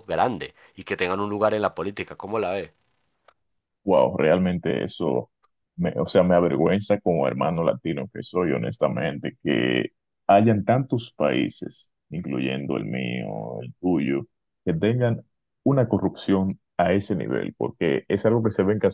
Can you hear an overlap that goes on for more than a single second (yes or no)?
no